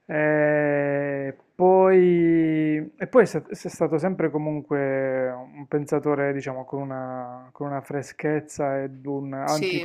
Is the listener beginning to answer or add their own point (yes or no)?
no